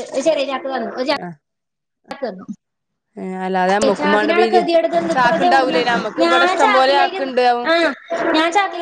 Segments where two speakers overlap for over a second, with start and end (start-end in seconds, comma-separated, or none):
5.1-7.2